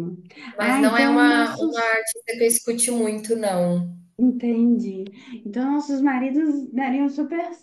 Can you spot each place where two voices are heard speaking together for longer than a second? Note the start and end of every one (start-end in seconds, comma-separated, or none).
0.6-2.0